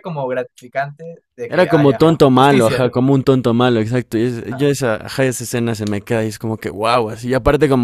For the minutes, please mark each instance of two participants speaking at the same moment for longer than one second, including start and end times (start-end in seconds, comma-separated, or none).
1.4-2.9